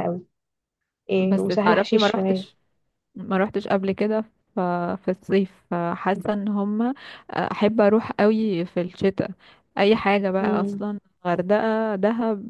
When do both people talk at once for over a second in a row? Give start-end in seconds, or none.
1.2-2.5